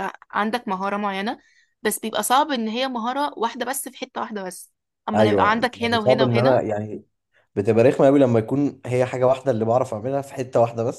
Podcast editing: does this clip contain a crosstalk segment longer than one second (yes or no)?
yes